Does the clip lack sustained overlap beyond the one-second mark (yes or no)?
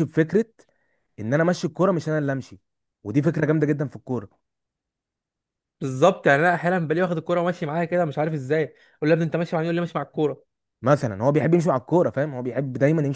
yes